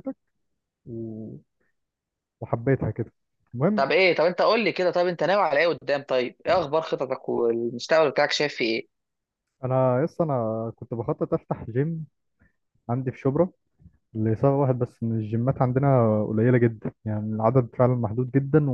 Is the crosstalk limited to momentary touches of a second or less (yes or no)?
yes